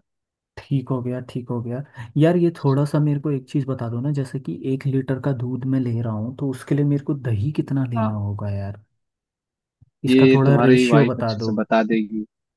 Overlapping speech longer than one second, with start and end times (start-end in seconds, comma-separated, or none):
10.1-11.5